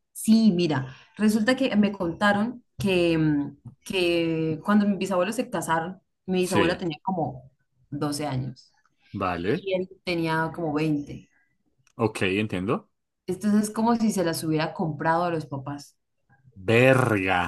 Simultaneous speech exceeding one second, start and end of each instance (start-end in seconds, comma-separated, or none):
none